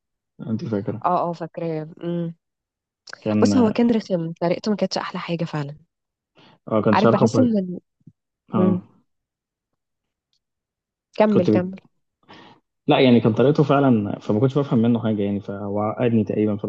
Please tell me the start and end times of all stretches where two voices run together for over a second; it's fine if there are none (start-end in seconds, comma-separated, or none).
none